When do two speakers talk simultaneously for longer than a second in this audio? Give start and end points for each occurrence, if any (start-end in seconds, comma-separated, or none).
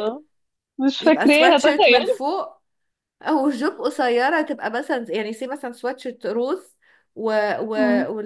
1.0-2.2